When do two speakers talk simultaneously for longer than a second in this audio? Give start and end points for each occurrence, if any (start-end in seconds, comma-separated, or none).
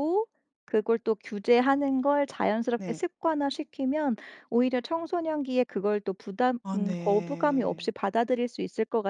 6.6-7.9